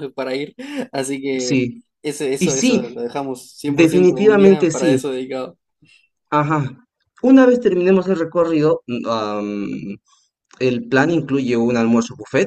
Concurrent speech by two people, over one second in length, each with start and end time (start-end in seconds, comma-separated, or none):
3.7-5.0